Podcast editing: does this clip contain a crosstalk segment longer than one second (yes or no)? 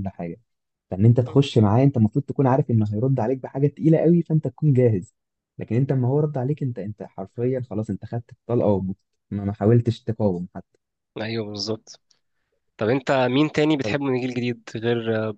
no